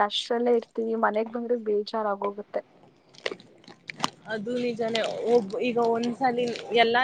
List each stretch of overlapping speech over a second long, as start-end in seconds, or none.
none